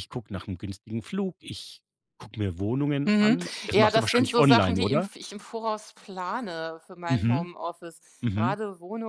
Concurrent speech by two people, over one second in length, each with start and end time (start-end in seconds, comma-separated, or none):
3.0-5.1